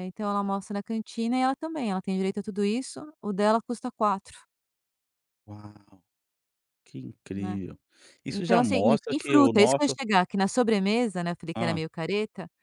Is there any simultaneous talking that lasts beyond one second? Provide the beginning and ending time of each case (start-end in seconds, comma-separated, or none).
8.3-10.0